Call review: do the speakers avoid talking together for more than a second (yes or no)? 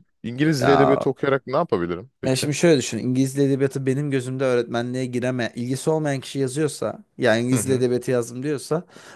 yes